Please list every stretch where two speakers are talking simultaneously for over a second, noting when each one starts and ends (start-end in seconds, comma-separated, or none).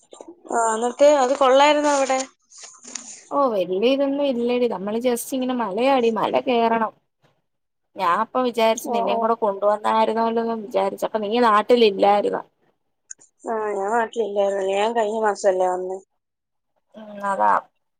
none